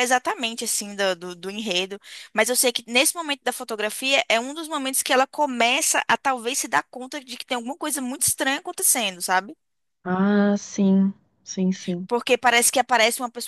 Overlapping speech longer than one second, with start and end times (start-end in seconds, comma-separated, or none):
none